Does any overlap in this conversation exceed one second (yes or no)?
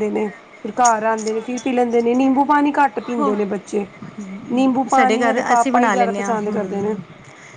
yes